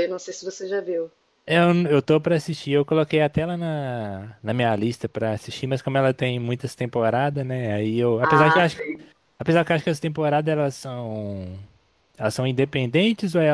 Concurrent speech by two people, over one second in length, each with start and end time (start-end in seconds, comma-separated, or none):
none